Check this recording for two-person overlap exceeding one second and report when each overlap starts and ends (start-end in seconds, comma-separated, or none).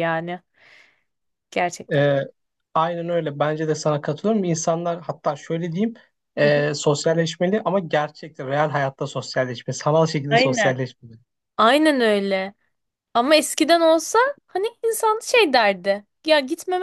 none